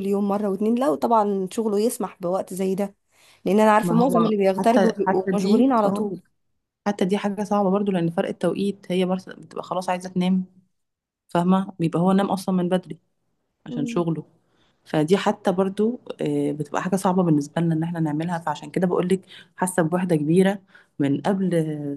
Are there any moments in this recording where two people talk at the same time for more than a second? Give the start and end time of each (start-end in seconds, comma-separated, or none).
3.8-6.1